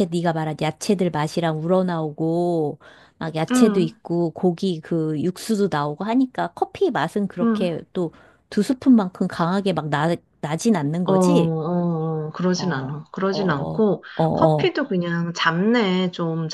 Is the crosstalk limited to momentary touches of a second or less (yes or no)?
no